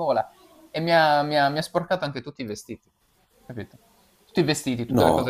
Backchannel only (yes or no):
yes